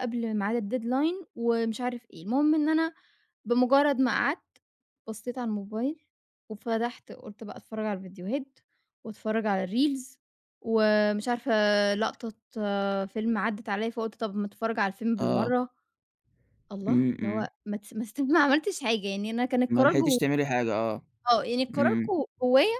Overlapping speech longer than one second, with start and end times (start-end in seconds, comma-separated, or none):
none